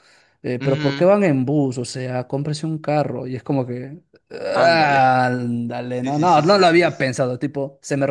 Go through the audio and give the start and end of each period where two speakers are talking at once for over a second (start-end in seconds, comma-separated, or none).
5.9-7.1